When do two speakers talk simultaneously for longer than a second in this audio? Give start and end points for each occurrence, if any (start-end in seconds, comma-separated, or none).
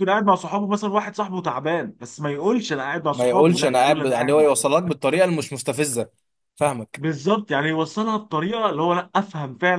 3.1-4.5